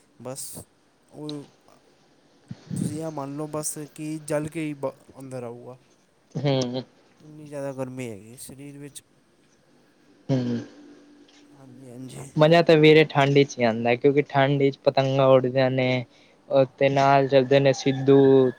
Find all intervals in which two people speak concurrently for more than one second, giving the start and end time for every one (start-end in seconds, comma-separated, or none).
none